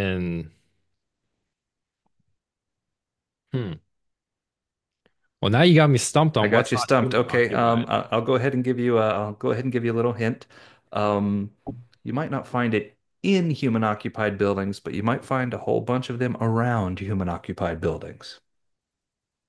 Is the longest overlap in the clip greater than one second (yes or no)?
yes